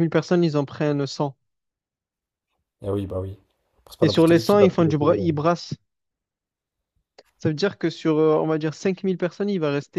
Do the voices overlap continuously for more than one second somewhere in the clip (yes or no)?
yes